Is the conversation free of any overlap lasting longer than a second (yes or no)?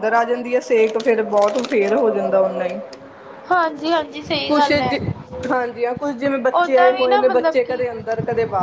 no